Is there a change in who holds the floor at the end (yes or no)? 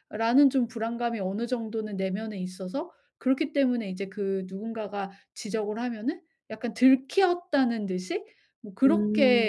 no